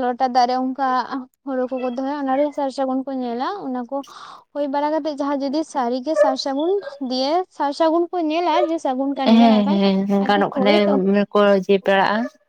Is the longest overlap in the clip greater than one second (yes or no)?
yes